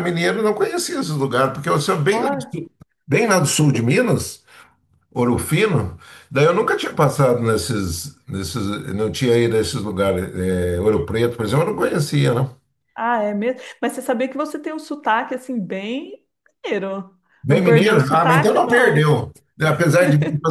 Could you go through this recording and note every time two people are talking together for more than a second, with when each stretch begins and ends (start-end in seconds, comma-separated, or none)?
17.4-19.1